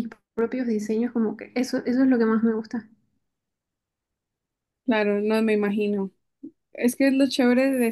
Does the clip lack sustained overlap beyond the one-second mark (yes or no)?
yes